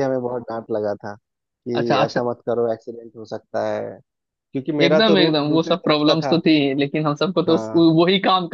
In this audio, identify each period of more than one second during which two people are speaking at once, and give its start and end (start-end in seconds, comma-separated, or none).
4.8-6.4